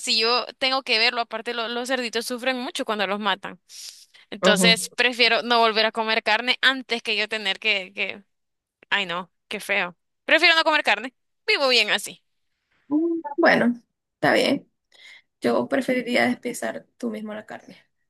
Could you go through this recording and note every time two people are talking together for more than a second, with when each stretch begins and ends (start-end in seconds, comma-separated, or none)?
none